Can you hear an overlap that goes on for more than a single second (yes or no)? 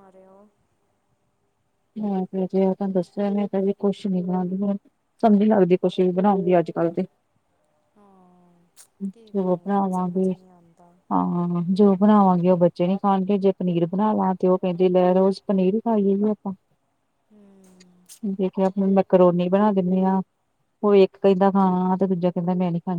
yes